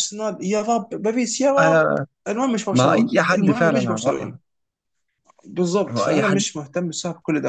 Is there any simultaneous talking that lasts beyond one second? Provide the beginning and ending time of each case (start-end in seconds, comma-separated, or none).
2.7-4.3